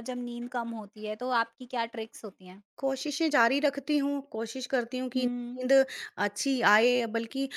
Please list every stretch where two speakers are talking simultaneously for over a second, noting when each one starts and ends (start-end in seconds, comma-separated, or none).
none